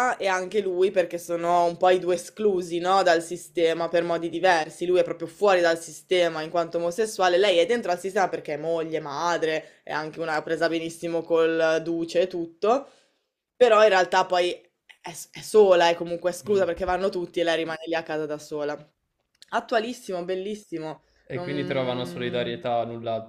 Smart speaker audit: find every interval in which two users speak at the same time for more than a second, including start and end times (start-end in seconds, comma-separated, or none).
21.2-22.5